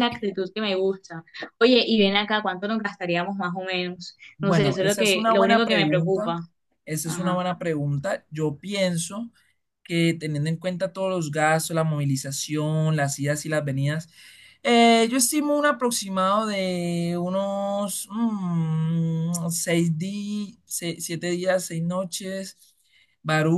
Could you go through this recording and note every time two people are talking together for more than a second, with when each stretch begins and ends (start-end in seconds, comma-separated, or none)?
4.4-6.4